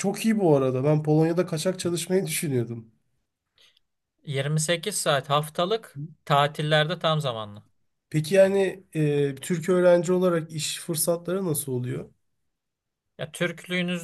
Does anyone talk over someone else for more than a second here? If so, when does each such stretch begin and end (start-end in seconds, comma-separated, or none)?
none